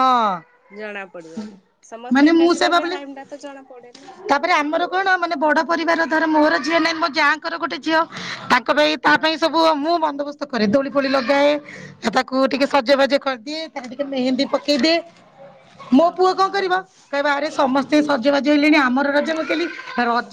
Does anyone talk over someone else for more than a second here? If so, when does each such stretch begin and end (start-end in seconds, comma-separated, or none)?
none